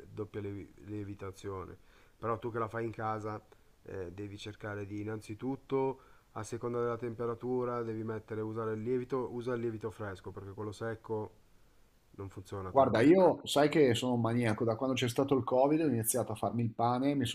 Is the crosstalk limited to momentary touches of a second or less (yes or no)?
yes